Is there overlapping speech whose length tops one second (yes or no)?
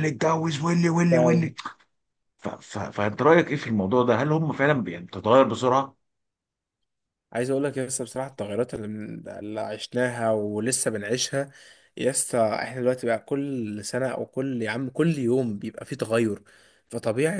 no